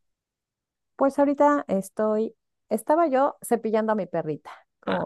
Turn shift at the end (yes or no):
yes